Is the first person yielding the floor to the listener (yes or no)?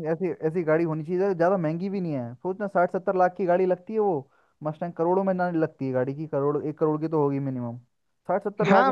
yes